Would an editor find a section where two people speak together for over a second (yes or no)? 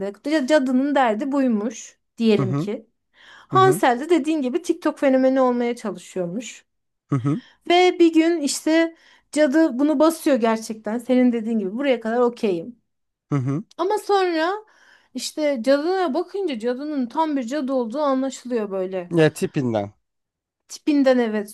no